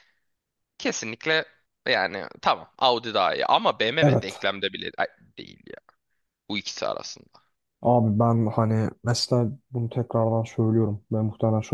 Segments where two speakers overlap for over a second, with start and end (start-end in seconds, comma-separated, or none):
none